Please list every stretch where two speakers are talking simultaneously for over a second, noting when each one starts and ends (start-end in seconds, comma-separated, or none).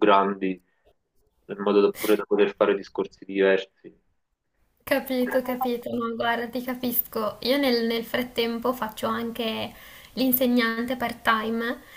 none